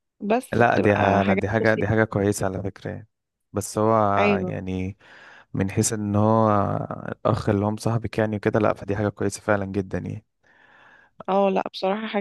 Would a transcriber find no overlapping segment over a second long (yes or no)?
no